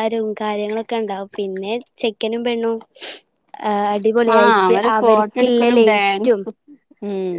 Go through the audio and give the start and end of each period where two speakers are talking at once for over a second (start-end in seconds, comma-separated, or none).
4.3-6.4